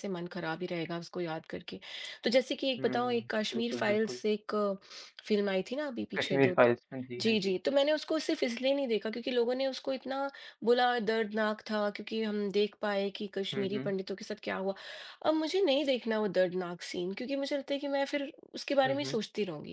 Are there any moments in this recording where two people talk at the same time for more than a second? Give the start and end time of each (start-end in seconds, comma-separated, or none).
2.8-4.2